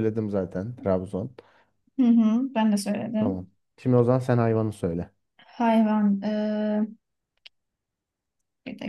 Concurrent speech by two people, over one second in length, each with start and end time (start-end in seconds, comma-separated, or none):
none